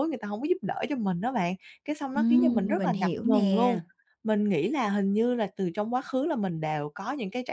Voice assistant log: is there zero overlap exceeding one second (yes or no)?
no